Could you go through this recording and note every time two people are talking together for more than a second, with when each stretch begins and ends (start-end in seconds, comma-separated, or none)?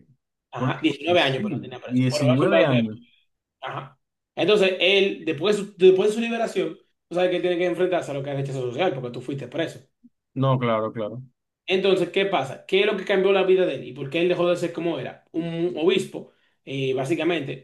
0.6-2.8